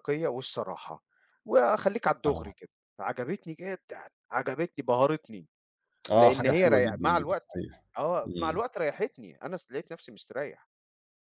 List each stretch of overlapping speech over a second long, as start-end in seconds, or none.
6.1-7.6